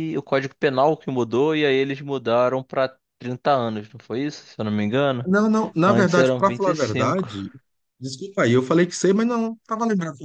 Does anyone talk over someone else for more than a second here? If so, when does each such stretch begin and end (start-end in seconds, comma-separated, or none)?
5.9-7.3